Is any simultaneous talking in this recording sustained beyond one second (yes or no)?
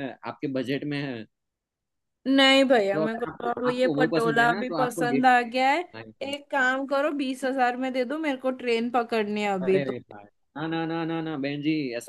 yes